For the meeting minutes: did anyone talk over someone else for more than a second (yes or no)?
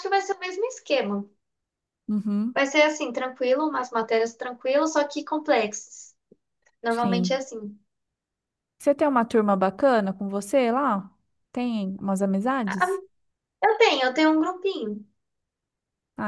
no